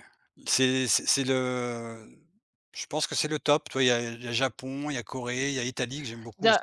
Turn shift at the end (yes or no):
yes